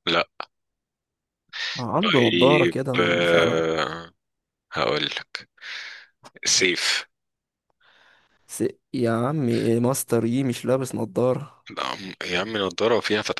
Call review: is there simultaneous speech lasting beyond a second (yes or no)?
yes